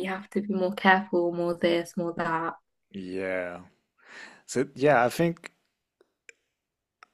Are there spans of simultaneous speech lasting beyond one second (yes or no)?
no